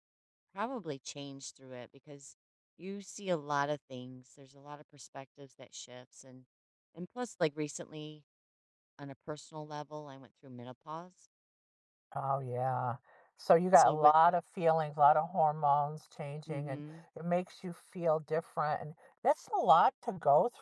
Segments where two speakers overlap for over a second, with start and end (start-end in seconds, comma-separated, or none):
none